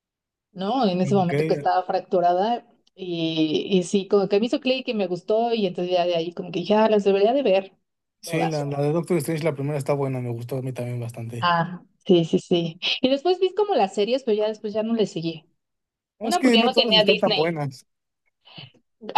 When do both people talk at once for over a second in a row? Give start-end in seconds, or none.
16.2-17.6